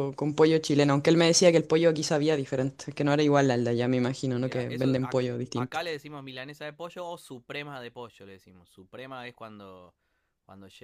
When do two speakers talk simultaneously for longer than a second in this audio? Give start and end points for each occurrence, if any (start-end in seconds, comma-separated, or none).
4.3-5.8